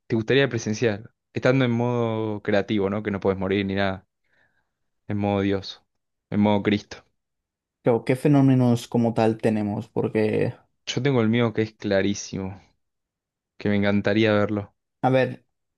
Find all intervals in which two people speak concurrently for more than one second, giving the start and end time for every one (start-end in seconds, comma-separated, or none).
none